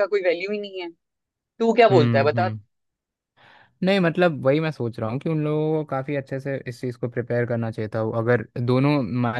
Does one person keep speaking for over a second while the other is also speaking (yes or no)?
no